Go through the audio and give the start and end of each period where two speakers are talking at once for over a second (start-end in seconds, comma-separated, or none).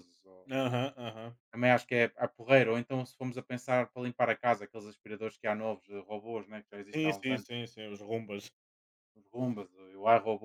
none